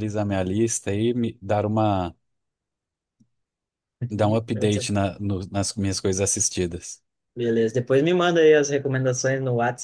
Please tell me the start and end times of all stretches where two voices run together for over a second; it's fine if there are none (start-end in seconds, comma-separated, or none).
none